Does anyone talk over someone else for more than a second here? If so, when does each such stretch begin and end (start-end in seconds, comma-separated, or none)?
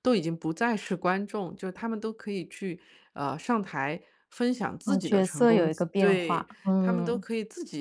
4.9-7.2